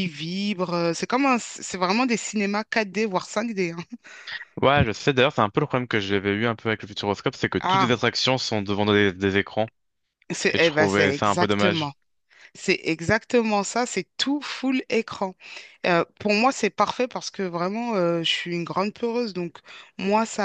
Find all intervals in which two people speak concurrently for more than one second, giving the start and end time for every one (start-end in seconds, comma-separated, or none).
10.5-11.9